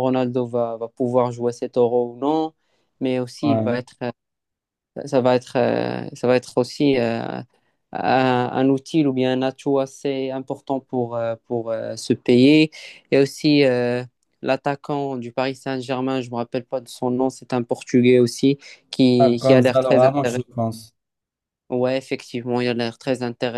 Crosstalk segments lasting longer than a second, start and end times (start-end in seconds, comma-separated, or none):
19.2-20.4